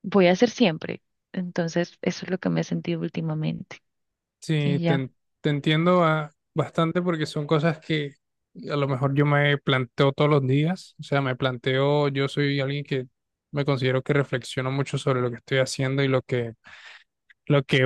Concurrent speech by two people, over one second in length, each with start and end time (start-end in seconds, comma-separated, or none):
none